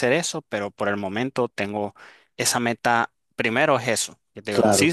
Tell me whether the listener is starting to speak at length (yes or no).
no